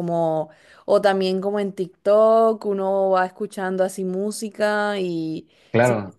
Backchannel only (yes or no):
yes